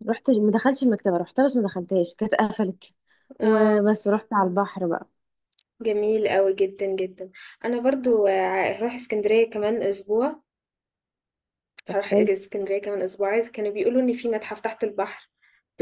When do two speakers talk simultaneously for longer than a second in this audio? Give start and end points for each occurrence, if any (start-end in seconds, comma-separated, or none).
none